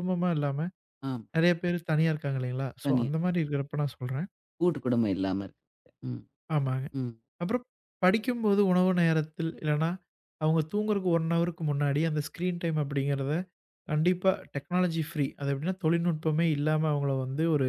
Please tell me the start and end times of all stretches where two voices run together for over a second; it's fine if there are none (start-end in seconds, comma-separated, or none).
none